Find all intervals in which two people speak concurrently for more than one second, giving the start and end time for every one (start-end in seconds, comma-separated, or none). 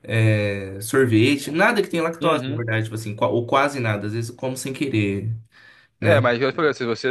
none